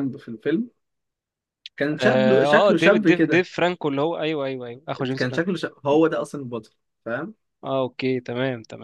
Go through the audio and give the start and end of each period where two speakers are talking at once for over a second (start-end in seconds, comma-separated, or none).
2.0-3.5